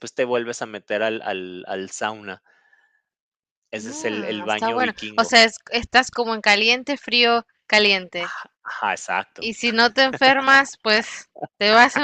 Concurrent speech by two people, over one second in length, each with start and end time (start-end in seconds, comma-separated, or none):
3.8-5.4